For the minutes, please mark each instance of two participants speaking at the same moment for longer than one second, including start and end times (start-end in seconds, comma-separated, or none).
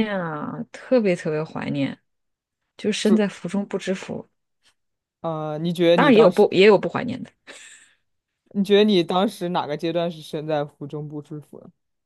none